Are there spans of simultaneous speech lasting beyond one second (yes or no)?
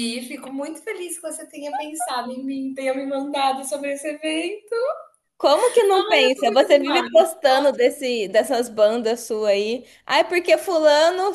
yes